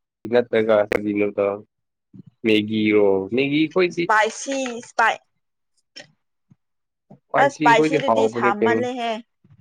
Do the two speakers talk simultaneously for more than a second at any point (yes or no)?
yes